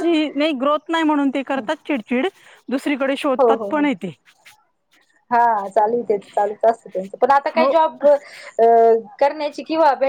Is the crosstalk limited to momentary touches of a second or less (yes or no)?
yes